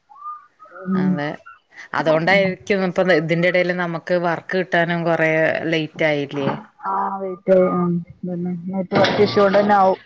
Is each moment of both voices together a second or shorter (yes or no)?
yes